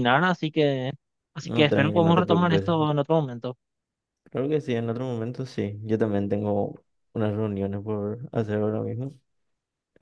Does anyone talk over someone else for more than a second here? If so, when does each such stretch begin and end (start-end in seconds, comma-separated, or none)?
1.4-2.6